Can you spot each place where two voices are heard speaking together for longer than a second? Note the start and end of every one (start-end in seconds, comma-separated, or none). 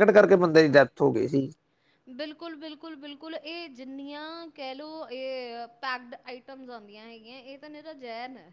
none